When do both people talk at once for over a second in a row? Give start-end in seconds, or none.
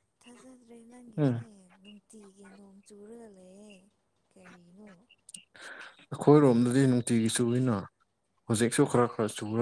none